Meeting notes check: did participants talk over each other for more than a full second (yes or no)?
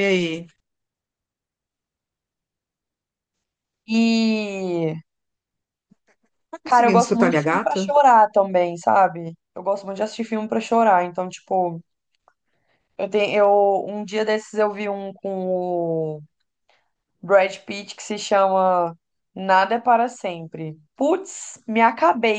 yes